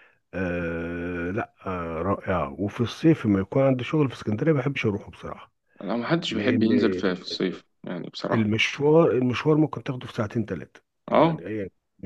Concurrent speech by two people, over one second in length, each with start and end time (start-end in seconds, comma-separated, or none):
none